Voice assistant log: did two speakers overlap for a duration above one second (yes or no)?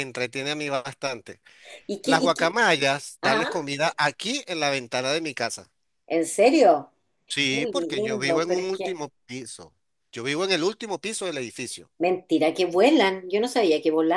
yes